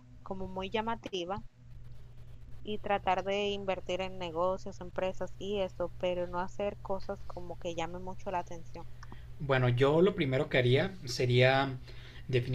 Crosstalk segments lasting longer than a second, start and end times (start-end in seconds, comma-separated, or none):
none